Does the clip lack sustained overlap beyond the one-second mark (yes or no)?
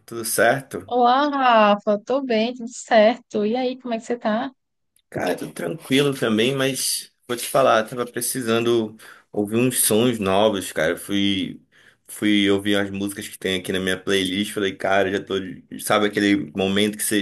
yes